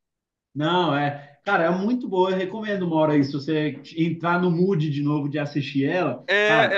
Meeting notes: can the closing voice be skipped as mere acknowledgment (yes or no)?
no